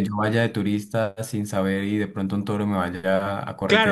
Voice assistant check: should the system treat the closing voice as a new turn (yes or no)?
yes